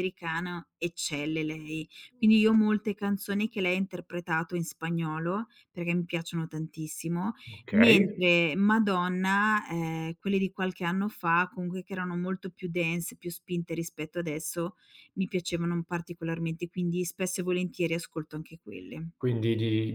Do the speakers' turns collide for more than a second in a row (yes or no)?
no